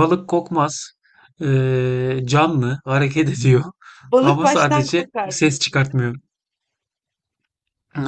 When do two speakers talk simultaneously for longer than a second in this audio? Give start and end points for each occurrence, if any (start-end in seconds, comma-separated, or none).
4.2-6.1